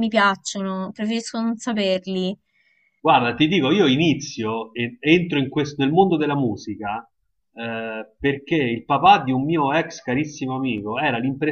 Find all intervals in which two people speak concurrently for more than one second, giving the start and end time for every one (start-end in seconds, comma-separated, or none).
none